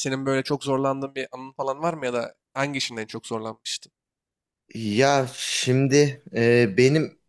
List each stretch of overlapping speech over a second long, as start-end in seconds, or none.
none